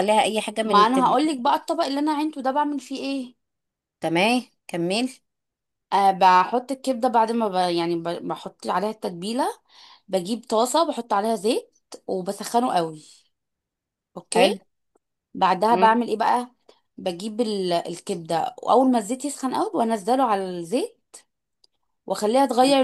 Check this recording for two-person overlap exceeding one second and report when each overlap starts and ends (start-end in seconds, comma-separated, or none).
none